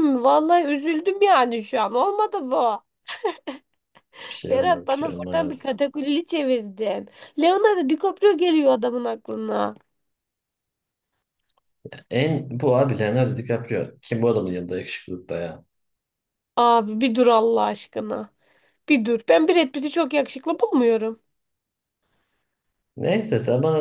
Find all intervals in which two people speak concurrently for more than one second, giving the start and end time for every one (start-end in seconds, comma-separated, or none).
4.5-5.7